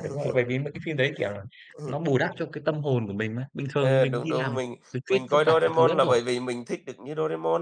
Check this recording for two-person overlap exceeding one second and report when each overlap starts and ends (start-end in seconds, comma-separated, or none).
3.8-6.2